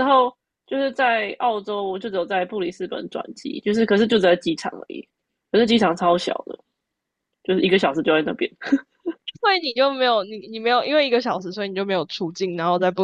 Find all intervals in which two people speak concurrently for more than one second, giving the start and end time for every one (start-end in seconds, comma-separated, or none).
none